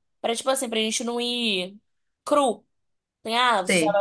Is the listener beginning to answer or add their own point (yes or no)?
no